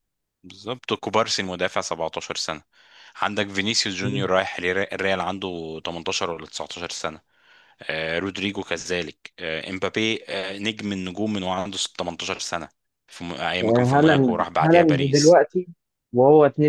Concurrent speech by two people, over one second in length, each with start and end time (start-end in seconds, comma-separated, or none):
13.6-15.4